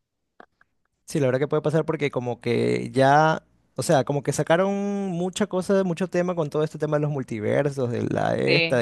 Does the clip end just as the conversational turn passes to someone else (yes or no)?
no